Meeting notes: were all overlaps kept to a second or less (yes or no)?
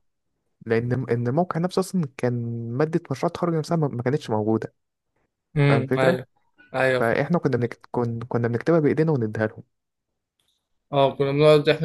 yes